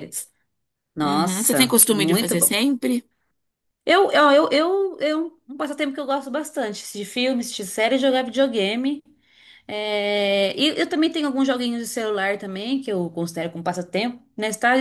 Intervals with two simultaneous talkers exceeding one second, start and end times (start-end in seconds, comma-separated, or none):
1.0-2.6